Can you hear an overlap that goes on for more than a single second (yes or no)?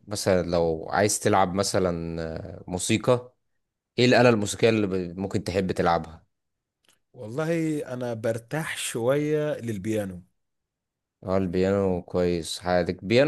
no